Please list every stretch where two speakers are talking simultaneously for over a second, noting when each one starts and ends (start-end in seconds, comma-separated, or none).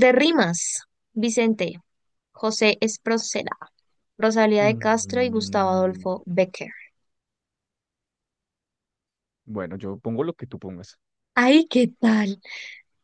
4.6-6.1